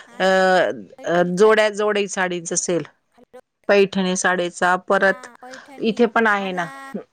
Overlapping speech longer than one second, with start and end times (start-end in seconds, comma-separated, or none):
none